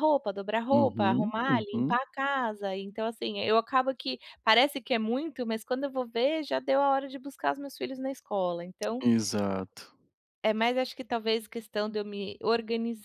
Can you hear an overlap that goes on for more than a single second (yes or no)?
yes